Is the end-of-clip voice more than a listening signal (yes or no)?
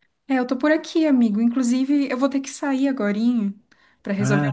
no